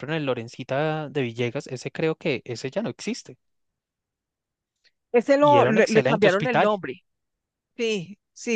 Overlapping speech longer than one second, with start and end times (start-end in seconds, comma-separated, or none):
5.4-6.7